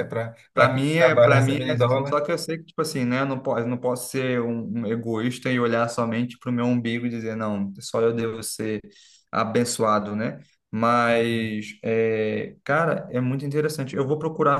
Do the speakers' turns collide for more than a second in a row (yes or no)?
yes